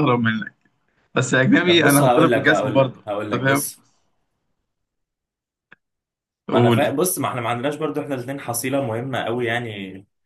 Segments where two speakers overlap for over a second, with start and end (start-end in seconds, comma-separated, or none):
1.6-3.6